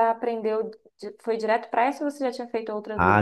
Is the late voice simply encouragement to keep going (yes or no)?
no